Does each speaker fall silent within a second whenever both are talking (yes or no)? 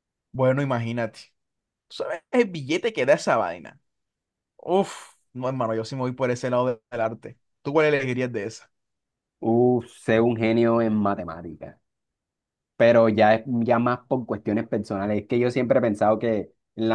yes